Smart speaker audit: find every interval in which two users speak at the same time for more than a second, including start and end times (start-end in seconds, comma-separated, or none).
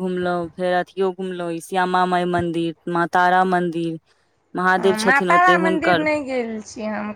none